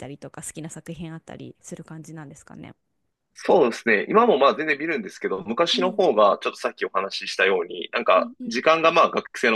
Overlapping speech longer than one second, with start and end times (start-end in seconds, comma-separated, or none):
none